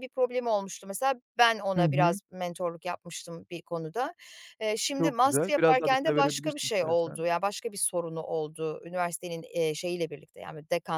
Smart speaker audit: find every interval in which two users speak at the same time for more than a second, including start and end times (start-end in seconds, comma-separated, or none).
5.0-7.2